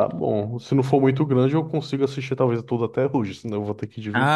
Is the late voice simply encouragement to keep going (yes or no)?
no